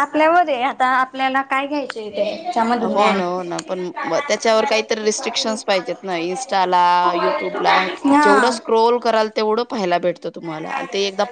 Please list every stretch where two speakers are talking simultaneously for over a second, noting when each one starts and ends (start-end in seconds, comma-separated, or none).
none